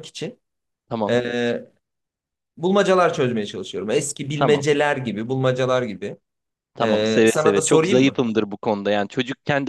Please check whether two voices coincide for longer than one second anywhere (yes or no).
yes